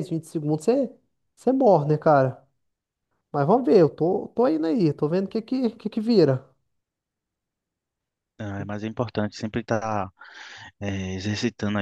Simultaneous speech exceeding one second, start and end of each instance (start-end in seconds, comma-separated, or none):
none